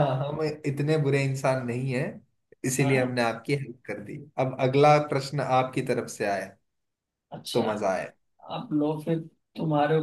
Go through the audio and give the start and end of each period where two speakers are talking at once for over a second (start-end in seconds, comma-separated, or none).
none